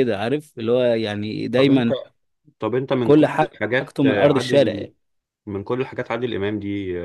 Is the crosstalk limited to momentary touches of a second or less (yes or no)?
no